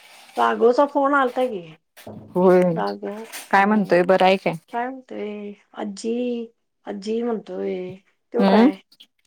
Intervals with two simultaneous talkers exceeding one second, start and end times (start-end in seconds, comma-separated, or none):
none